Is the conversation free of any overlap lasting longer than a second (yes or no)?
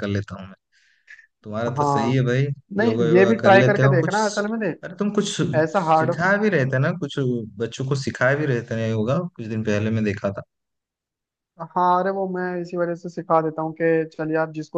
no